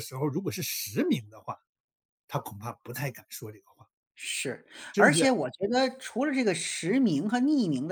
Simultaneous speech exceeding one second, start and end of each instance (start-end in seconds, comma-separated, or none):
none